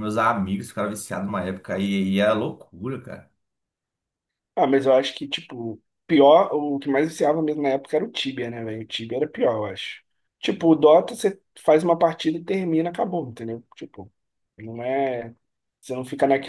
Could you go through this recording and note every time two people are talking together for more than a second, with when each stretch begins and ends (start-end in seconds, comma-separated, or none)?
none